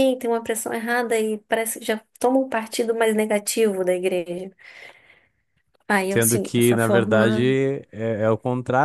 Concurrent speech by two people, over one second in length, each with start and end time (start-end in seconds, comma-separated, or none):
6.1-7.5